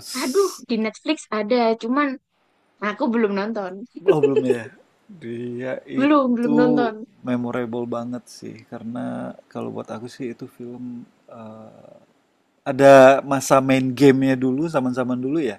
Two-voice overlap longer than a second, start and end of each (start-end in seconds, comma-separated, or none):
none